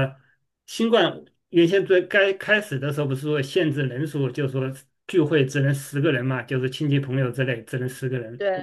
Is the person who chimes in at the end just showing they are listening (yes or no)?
yes